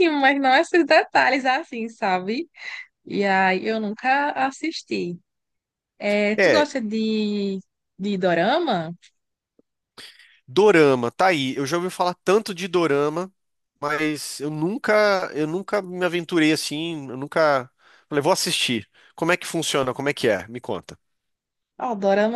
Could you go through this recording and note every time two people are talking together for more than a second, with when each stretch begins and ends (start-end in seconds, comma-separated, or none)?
none